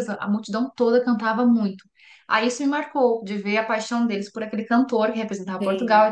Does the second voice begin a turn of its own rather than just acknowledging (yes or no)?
no